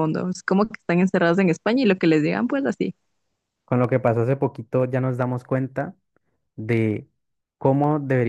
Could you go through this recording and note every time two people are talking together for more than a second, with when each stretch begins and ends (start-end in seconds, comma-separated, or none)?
none